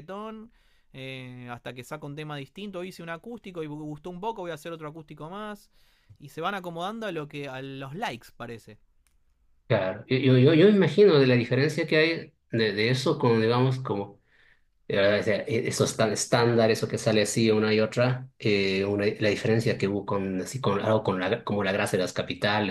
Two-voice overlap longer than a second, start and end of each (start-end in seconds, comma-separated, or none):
none